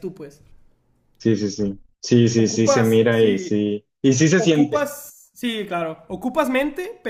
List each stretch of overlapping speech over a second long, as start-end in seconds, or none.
2.4-3.6